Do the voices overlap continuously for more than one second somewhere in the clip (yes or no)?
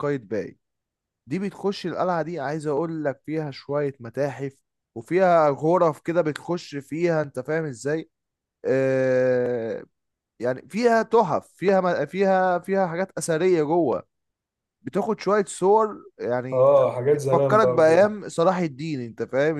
yes